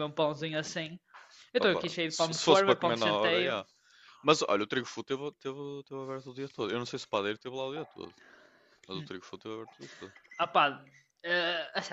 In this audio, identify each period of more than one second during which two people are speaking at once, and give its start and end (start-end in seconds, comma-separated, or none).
1.6-3.6